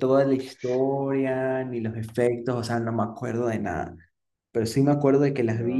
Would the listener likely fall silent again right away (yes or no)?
yes